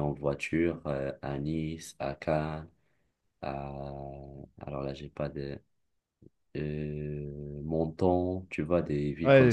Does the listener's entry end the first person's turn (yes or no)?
yes